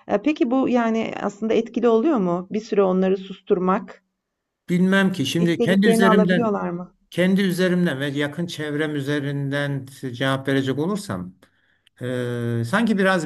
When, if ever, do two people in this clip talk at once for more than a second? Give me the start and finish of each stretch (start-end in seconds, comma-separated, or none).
5.4-6.6